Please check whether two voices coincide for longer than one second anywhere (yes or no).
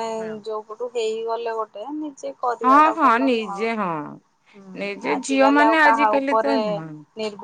yes